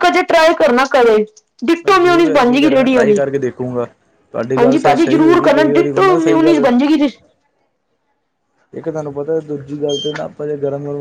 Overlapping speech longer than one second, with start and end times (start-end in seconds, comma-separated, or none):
1.8-3.2, 4.6-6.7